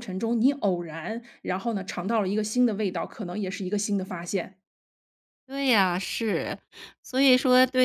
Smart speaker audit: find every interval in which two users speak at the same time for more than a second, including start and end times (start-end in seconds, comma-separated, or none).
none